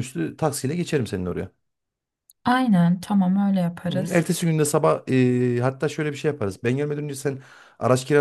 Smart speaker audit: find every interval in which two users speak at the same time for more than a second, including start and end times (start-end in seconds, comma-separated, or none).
none